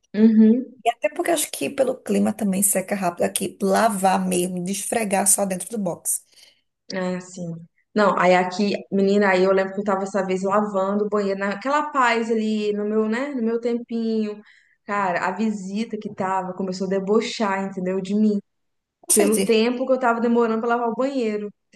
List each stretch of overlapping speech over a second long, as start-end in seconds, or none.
none